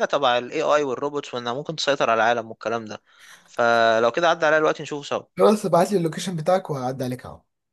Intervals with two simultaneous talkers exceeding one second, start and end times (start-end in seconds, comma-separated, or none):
none